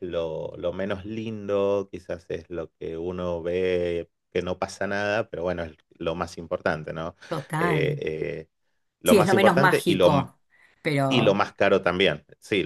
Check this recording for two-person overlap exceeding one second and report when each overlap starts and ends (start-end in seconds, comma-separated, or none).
9.1-10.3